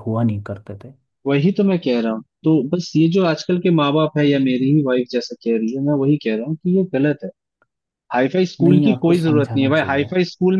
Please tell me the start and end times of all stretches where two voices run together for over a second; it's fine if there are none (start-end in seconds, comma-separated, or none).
8.6-10.1